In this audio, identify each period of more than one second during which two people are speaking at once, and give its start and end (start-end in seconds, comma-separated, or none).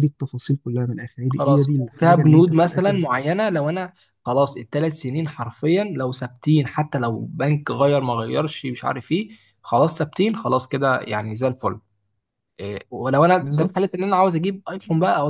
1.3-3.0